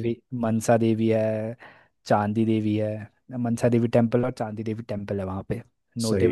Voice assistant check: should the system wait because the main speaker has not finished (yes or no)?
yes